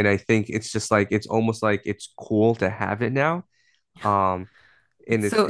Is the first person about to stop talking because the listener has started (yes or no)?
yes